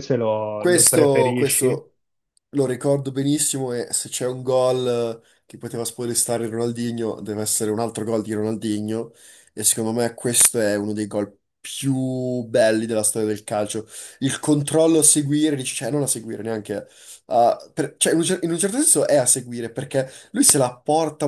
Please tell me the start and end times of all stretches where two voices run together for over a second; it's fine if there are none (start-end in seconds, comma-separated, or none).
0.6-1.8